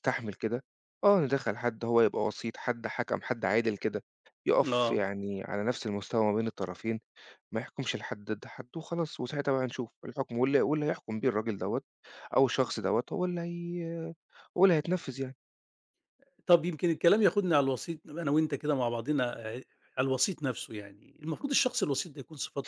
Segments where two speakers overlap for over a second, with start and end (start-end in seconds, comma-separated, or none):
none